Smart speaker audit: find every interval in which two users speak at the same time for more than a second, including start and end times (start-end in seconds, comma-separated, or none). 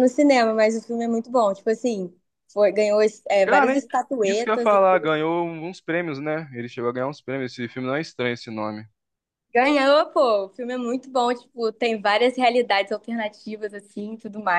3.4-5.1